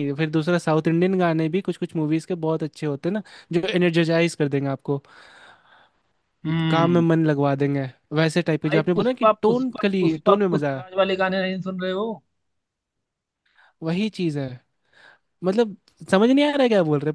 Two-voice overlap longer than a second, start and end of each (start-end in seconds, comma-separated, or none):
8.7-11.0